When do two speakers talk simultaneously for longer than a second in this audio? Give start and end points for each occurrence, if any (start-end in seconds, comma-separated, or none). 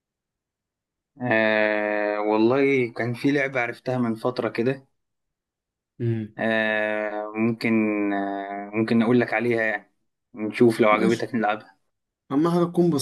none